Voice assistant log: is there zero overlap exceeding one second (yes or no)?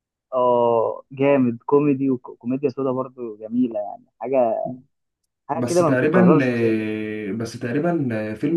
no